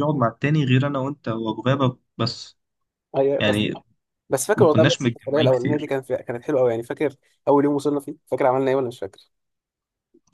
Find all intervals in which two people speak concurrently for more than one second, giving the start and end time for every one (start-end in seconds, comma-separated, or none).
4.5-5.9